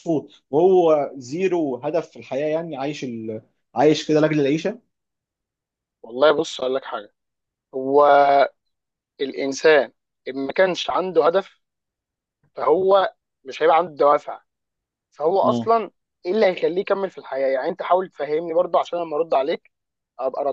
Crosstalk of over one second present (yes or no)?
no